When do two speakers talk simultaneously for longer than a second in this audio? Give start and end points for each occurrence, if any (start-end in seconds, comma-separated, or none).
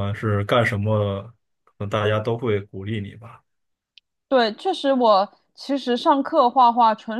none